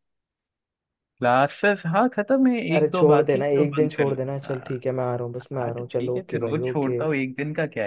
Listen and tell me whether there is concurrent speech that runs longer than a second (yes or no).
yes